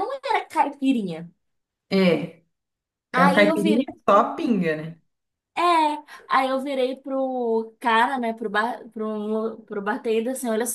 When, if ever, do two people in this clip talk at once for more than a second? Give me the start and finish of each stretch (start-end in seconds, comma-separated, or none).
3.1-4.6